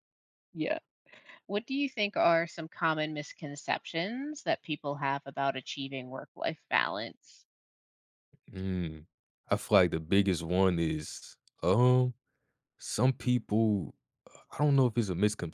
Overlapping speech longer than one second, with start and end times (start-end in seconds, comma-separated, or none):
none